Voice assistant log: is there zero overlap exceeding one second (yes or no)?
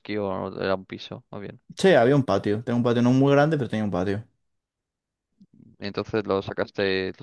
yes